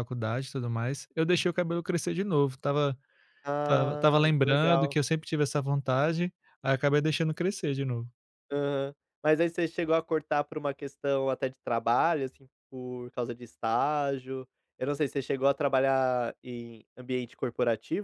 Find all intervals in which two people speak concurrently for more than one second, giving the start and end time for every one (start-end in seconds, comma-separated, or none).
3.6-5.0